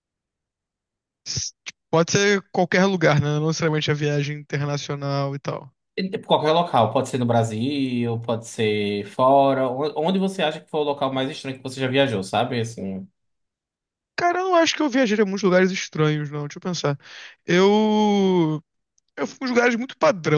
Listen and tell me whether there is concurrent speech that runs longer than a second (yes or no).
no